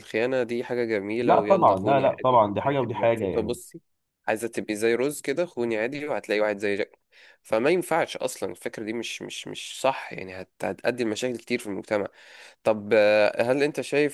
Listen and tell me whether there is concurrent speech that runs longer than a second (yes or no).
yes